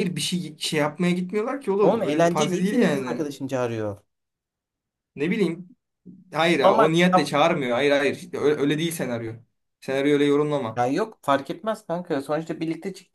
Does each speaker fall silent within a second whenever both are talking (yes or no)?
no